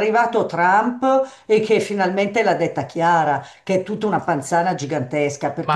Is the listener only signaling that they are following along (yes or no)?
yes